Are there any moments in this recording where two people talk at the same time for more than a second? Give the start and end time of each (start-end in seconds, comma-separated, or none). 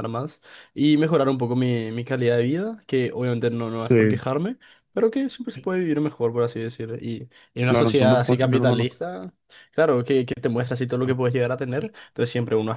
7.6-8.9